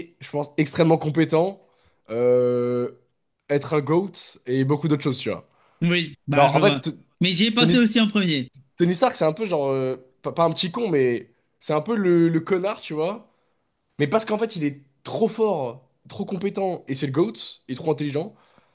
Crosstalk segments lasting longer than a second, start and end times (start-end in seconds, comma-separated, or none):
none